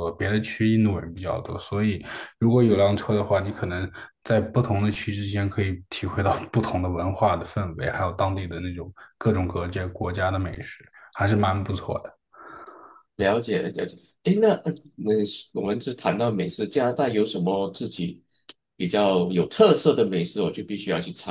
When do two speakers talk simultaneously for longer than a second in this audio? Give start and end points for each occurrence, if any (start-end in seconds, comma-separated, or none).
none